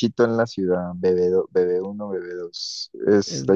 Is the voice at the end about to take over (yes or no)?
no